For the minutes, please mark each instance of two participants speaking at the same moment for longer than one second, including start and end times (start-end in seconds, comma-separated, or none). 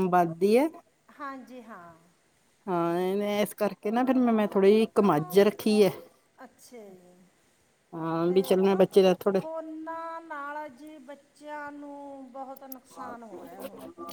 none